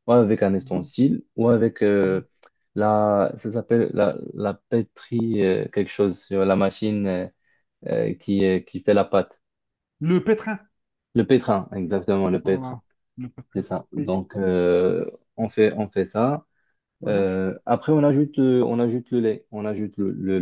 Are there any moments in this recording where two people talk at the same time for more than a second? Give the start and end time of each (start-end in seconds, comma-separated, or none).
none